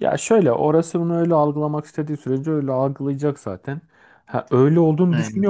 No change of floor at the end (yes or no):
yes